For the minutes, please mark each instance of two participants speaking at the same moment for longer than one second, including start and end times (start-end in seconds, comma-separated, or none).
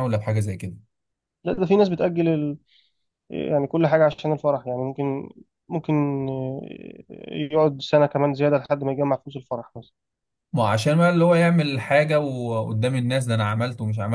none